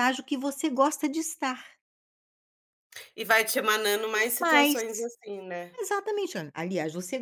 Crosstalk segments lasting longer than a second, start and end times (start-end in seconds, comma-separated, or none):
none